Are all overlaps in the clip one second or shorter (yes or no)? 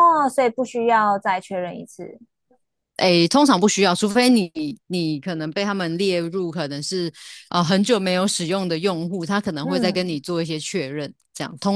yes